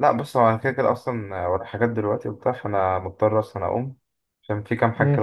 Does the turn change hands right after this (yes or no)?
no